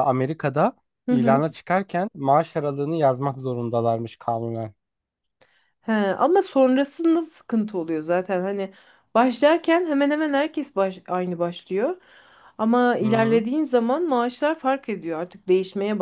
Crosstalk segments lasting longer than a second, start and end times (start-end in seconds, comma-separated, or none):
none